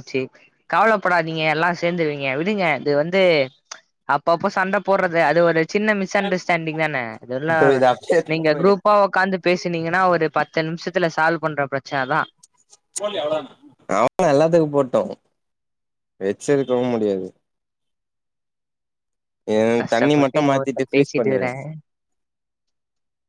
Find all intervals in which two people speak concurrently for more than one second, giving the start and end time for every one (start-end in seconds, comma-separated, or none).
19.9-21.5